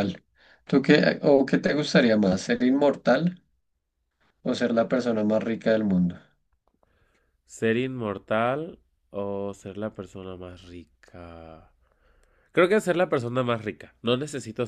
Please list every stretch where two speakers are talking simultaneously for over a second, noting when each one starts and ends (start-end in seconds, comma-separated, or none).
none